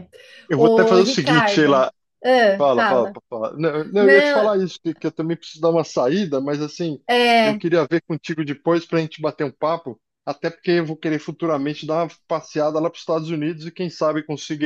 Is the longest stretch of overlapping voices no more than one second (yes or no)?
no